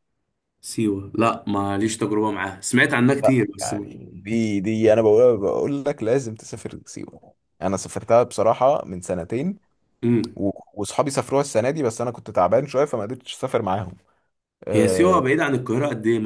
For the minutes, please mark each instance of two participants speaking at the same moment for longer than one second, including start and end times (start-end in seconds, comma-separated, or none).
none